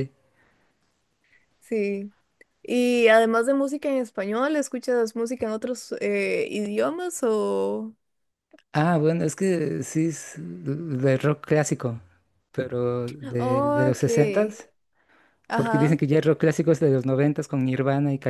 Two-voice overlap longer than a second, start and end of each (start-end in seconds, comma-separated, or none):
13.4-14.6